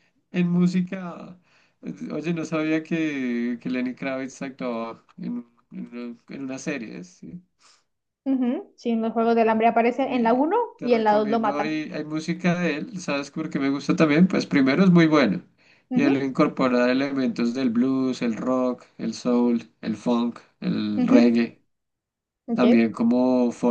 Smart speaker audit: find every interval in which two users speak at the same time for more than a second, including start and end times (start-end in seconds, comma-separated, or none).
10.0-11.8